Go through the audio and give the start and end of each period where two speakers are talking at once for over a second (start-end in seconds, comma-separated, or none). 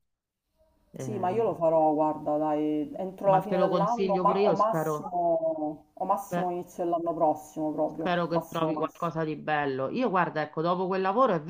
3.2-5.2, 7.8-9.1